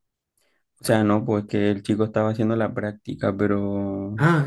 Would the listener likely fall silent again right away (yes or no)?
no